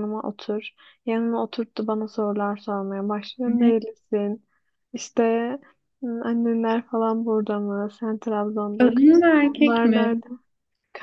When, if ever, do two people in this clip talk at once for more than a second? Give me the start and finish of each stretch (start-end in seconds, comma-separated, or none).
8.8-10.2